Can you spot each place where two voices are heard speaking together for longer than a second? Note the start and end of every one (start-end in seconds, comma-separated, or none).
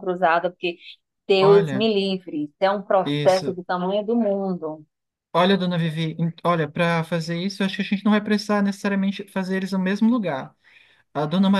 none